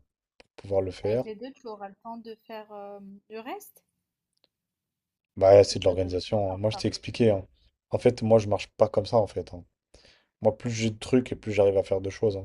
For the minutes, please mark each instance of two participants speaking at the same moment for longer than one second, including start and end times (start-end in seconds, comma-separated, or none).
5.5-6.9